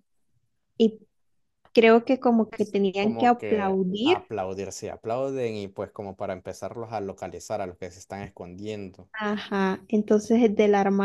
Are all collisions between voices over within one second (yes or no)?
no